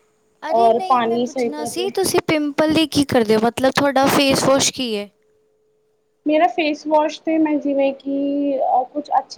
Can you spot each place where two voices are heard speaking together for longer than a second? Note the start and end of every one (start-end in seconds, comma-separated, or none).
0.6-1.9